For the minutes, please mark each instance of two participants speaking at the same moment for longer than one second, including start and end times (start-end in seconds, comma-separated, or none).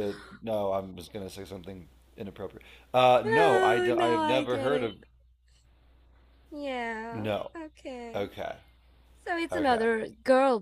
3.2-4.9